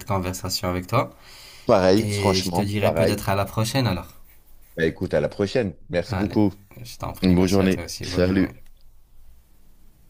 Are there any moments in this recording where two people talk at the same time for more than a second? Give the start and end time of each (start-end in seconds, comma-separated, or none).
2.0-3.2, 7.2-8.5